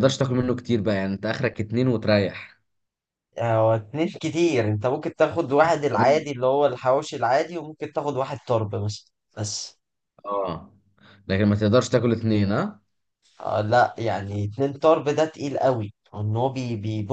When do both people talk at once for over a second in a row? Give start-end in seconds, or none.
none